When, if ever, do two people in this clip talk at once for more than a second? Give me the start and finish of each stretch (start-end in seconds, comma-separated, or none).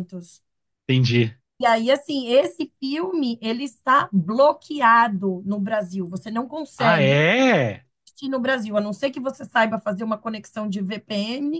none